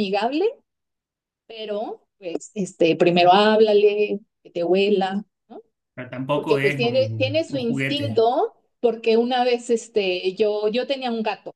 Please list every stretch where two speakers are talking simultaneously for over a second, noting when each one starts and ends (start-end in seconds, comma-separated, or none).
6.3-8.2